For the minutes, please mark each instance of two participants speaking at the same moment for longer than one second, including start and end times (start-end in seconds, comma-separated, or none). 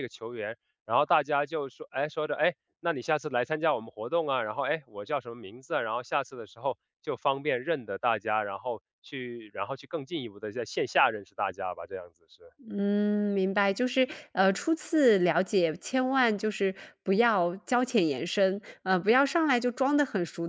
none